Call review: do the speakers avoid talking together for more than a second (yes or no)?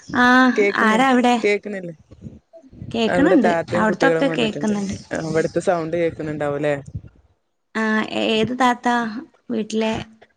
no